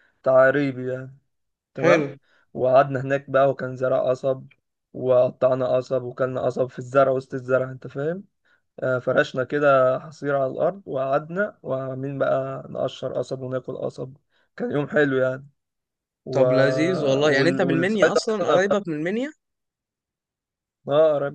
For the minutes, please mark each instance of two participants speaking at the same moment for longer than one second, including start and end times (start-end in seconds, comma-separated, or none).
17.4-18.8